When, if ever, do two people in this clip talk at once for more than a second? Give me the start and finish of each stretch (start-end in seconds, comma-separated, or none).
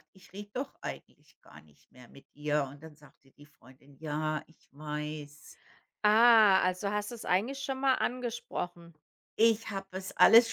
none